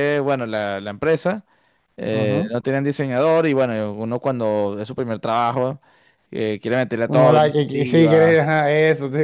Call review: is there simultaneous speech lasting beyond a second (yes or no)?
yes